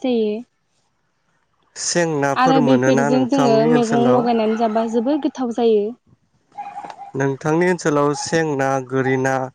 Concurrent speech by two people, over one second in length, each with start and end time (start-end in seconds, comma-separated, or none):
2.4-4.2